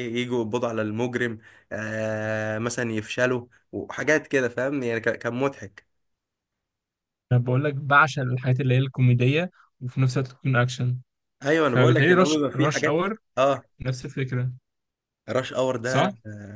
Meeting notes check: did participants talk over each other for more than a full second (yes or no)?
yes